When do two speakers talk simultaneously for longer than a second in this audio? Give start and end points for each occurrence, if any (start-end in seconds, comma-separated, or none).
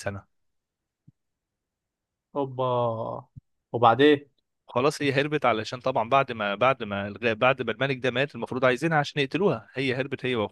none